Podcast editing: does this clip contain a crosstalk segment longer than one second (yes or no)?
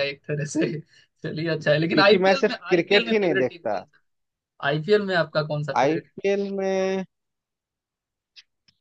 yes